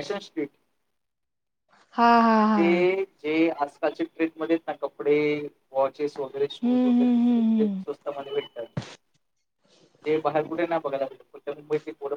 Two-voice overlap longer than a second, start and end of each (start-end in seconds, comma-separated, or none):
6.6-8.0